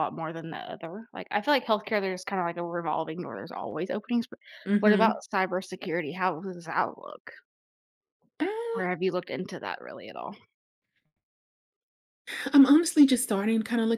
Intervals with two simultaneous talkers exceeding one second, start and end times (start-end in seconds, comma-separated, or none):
none